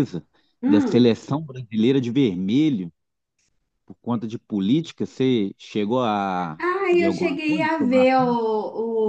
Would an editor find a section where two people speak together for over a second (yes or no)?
yes